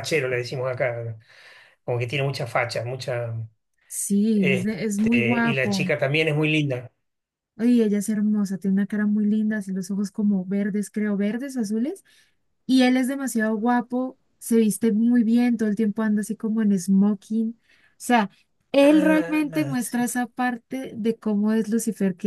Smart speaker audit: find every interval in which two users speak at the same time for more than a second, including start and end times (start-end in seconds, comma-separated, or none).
4.3-5.9, 18.8-20.1